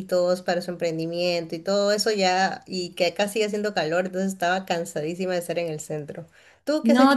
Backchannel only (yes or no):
no